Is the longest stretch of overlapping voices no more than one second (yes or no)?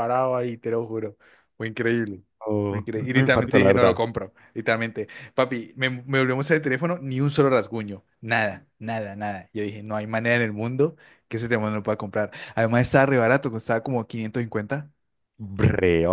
no